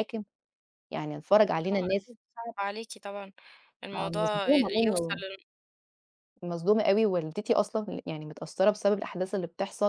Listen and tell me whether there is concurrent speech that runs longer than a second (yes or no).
yes